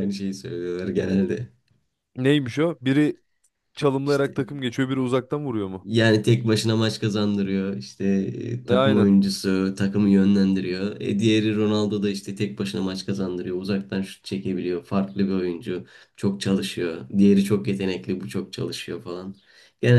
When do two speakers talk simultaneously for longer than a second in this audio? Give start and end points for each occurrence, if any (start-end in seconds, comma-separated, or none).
none